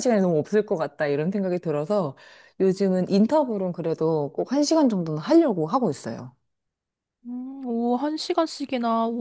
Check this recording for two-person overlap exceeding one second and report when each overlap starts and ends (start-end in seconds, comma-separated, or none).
none